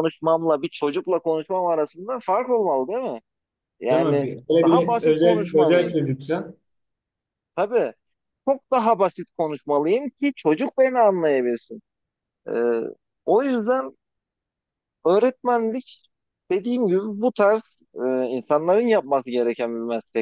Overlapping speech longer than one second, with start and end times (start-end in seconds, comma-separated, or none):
3.9-6.0